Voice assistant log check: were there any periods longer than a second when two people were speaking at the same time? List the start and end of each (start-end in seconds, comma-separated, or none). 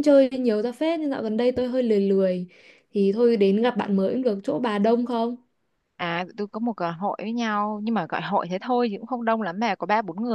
none